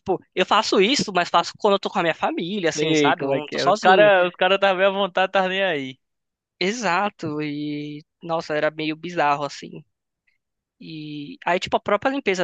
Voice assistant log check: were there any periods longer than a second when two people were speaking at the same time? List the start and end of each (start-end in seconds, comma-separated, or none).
2.7-4.1